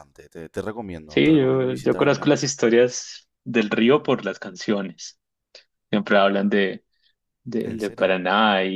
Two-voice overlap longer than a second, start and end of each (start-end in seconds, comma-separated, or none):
1.1-2.5